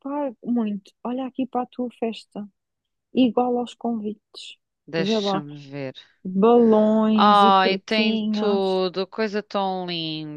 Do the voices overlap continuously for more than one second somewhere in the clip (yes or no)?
yes